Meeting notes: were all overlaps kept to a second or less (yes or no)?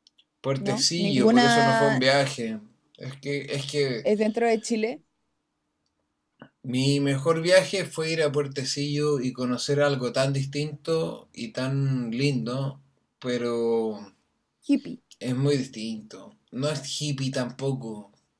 no